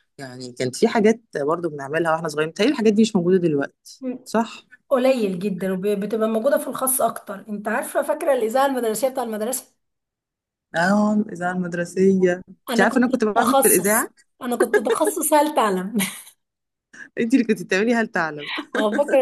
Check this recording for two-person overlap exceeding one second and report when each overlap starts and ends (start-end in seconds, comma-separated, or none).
12.7-14.1